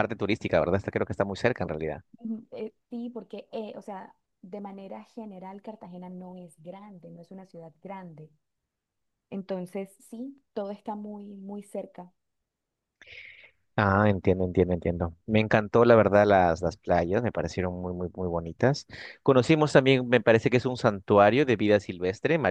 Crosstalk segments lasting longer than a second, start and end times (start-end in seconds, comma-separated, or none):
none